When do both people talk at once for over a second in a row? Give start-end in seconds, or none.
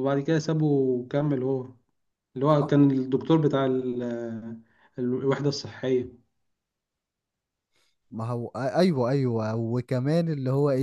none